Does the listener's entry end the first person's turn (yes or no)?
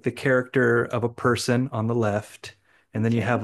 no